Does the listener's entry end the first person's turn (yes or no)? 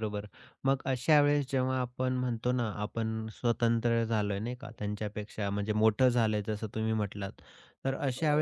no